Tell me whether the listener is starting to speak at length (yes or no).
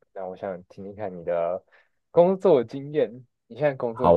yes